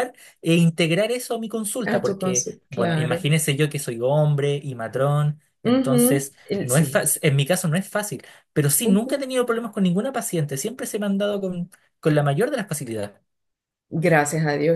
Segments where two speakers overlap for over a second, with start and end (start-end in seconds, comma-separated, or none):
1.8-3.3, 5.6-7.1